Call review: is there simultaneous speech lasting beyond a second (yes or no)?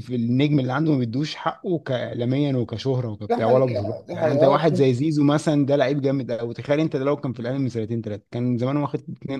yes